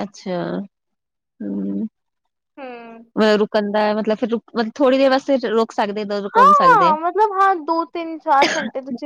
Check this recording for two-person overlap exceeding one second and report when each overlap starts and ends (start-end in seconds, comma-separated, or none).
none